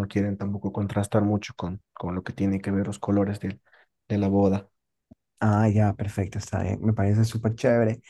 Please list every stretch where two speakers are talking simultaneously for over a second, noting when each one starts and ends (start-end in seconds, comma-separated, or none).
none